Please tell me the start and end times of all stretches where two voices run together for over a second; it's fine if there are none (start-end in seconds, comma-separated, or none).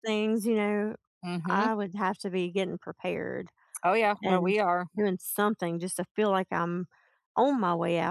none